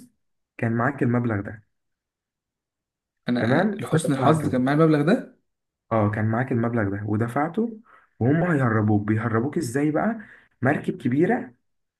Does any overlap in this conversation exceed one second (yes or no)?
yes